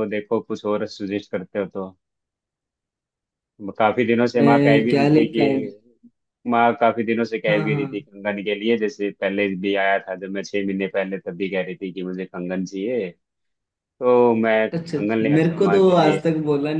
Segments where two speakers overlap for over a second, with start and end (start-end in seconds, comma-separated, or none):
4.3-5.6, 14.8-16.2